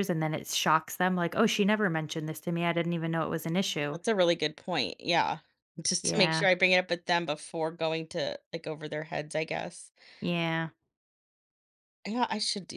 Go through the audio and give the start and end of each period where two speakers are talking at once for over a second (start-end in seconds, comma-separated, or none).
none